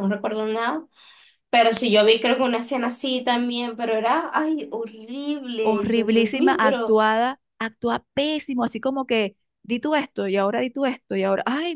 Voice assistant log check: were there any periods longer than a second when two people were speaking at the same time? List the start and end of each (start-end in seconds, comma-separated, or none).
5.6-7.0